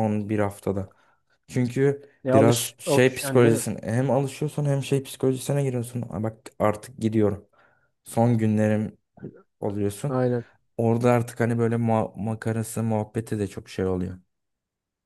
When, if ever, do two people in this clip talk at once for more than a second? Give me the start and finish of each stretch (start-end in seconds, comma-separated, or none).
2.2-3.7